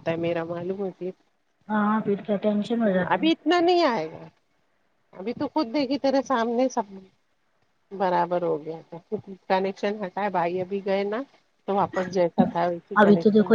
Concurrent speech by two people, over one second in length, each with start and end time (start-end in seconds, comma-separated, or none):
none